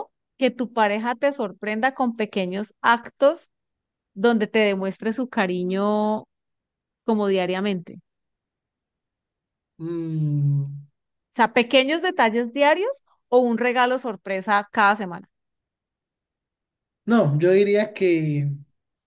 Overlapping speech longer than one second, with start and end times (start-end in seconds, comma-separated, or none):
none